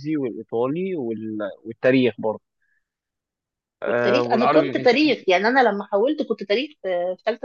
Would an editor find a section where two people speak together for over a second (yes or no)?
yes